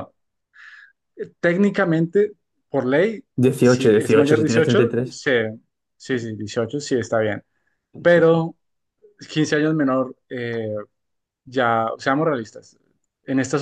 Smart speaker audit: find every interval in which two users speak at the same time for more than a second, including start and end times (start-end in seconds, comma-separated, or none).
3.6-5.2